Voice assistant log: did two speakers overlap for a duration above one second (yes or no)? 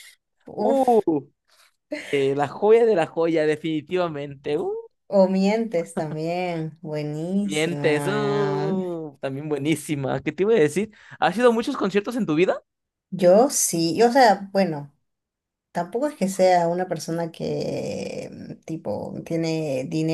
yes